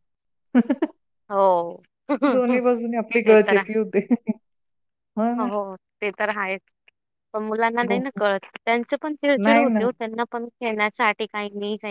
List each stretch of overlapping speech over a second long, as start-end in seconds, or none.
none